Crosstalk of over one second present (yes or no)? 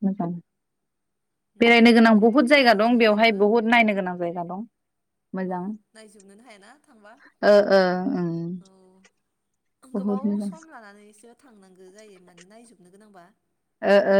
yes